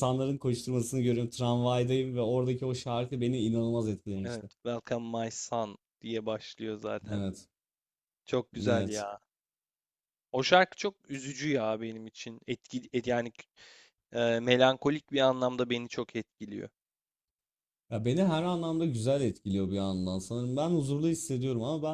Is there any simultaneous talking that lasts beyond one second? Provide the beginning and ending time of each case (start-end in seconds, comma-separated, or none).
none